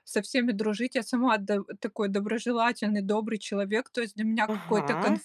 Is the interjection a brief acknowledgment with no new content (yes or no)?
yes